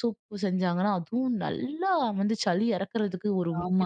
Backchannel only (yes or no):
no